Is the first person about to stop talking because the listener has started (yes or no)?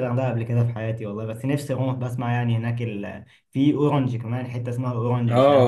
yes